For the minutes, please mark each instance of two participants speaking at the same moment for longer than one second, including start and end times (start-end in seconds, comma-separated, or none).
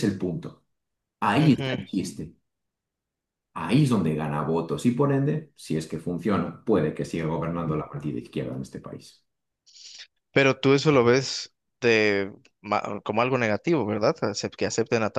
none